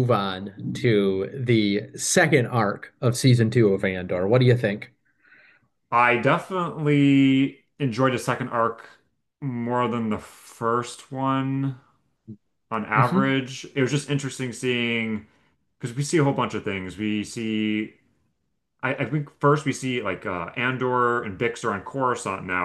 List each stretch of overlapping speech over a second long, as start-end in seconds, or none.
none